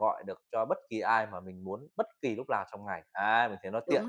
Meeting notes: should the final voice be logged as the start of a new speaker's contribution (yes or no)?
yes